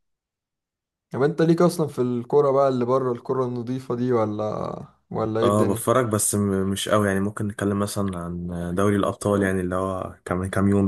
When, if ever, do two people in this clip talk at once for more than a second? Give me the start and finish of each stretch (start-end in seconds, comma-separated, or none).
none